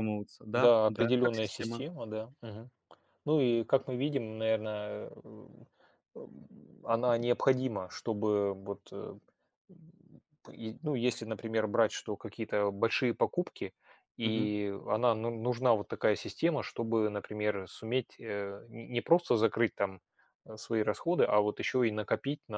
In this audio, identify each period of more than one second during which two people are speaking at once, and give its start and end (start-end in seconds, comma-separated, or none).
0.5-1.8